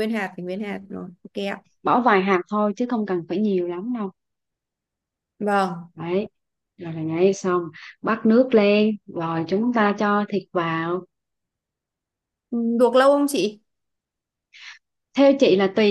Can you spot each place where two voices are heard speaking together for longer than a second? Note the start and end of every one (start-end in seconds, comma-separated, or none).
none